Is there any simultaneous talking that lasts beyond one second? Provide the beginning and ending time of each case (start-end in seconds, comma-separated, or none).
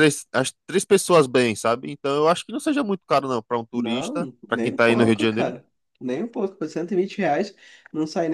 3.7-5.5